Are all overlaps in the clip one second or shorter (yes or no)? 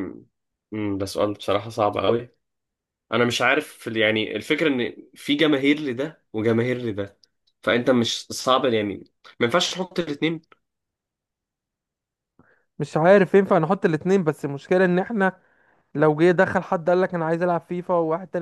yes